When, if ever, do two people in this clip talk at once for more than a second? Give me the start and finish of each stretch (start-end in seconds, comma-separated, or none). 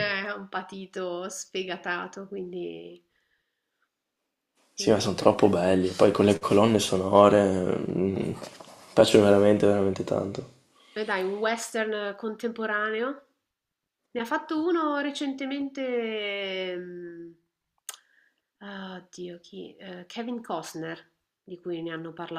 none